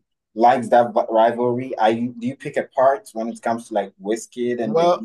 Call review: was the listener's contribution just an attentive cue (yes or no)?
no